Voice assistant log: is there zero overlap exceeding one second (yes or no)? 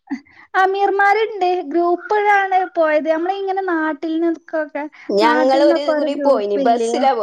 yes